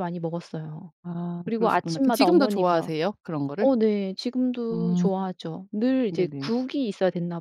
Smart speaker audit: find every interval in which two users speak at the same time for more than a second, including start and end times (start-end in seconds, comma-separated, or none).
1.4-2.9